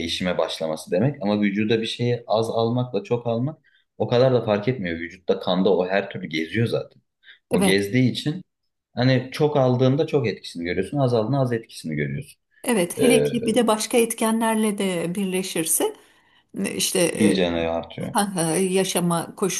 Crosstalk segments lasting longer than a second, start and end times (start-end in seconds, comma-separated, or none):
none